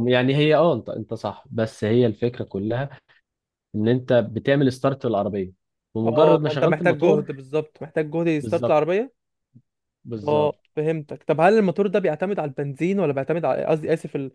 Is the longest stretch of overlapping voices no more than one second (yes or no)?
no